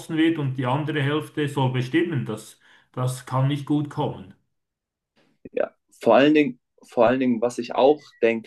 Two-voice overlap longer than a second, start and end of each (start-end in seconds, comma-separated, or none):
none